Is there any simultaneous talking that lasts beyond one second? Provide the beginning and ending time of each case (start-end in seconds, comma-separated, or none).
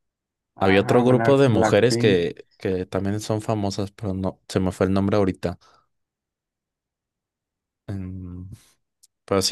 0.6-2.3